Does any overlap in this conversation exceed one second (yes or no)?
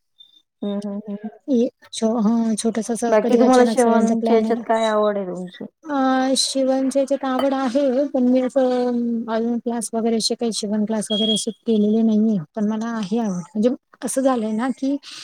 yes